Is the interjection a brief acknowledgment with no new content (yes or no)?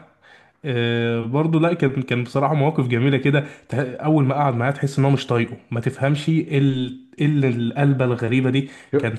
yes